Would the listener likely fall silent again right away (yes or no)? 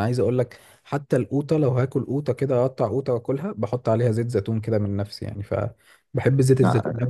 yes